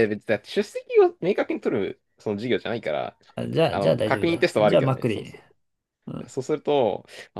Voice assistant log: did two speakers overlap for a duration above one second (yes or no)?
yes